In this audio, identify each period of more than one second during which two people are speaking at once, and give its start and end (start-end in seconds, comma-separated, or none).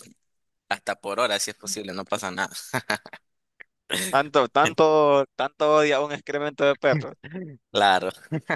none